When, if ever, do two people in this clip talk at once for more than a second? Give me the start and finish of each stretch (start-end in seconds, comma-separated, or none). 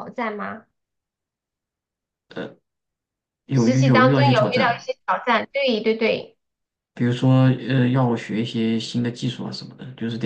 3.5-4.8